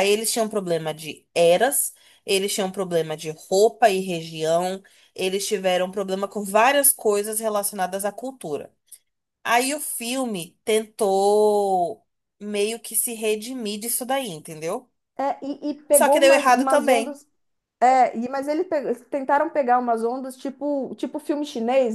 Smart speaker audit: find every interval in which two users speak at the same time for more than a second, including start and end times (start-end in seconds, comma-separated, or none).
15.9-17.2